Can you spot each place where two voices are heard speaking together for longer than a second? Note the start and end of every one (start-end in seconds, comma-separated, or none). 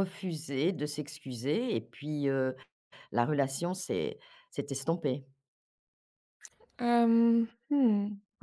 none